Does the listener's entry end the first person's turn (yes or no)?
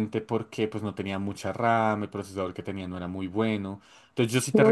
no